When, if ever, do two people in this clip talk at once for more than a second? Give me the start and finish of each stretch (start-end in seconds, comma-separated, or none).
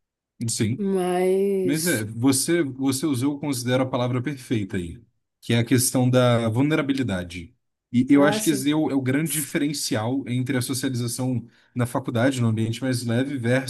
none